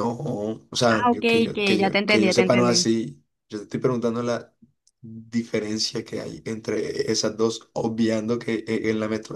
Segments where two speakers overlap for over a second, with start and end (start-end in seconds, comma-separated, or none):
0.9-2.9